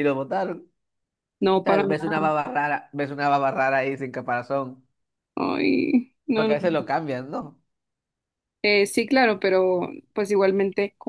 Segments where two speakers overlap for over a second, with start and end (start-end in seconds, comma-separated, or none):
none